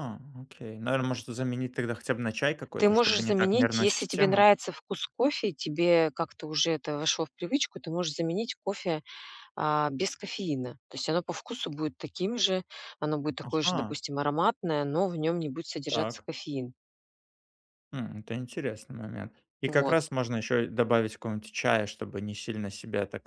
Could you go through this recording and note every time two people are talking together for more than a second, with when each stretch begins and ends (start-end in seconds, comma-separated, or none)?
2.8-4.5